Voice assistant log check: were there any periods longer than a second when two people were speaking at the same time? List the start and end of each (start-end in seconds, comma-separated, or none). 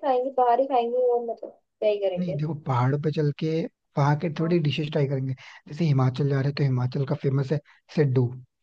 none